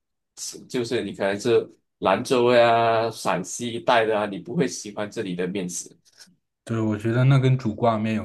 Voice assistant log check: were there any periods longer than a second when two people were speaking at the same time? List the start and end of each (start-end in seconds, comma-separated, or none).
none